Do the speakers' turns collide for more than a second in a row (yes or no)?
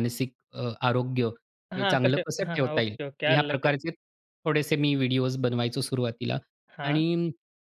yes